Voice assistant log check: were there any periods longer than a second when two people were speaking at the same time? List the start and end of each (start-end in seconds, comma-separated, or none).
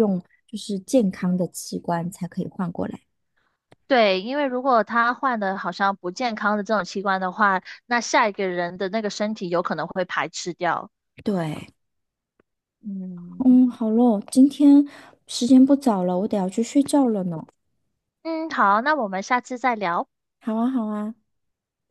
none